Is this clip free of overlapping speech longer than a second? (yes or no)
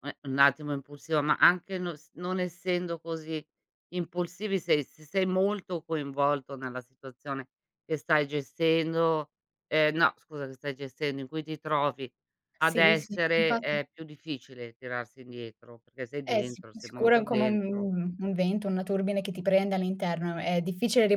no